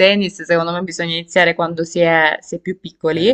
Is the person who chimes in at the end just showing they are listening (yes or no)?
yes